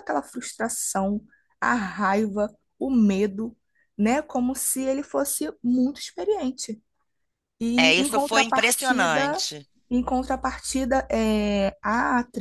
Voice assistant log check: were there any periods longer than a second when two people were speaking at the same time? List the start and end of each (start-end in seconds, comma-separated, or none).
7.8-9.5